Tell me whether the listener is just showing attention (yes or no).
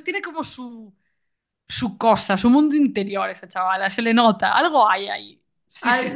no